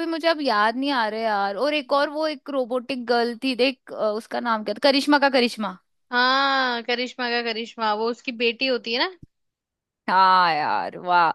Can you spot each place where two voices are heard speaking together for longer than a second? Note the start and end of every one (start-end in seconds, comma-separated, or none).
none